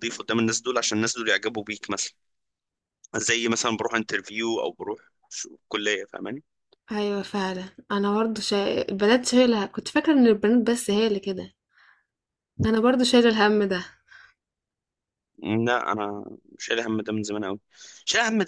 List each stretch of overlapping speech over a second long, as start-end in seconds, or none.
none